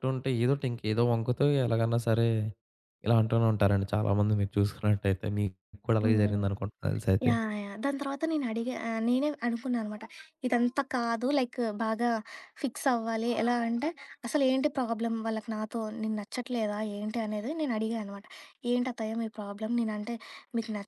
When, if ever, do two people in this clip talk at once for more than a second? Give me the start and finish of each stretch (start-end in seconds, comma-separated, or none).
none